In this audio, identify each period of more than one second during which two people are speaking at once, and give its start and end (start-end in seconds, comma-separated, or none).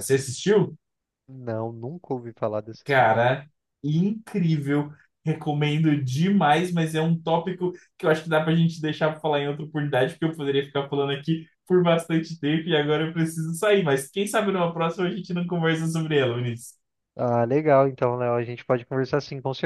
none